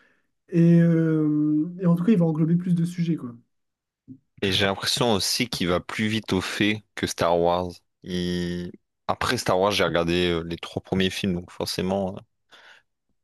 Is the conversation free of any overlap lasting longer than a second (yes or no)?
yes